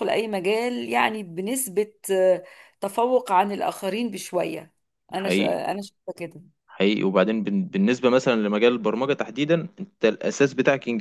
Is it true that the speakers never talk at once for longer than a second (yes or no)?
yes